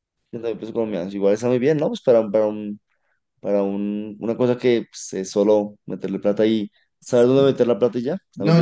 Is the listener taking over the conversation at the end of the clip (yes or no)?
yes